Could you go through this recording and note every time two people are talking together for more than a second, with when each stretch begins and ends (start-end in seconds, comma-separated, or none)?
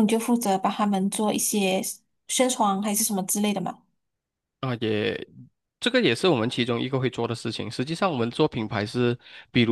none